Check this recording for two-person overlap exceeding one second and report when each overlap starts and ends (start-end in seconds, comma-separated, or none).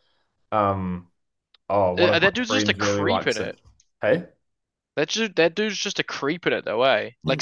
2.0-3.5